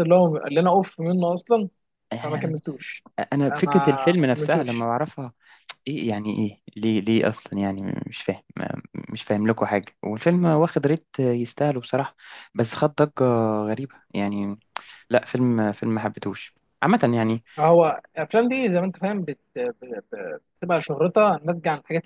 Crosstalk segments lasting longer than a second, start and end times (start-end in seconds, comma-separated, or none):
3.5-4.9